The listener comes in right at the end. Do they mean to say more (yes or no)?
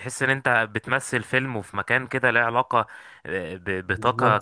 no